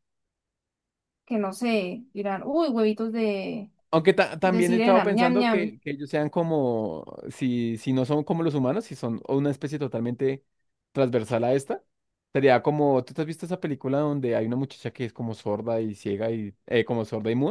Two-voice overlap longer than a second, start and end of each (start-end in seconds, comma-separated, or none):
4.4-5.8